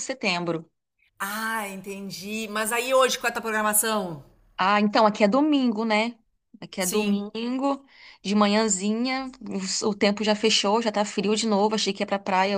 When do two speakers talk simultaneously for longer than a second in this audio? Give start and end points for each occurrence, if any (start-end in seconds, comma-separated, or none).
none